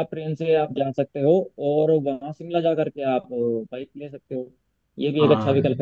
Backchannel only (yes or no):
yes